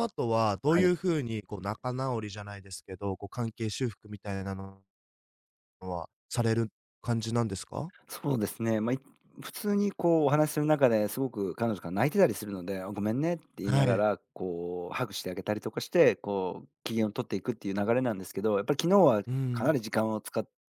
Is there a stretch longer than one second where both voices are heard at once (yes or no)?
no